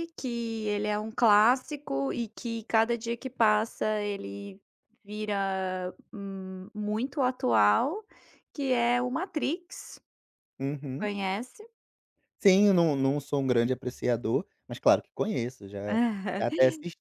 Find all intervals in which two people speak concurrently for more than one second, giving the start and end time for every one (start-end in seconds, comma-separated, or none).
none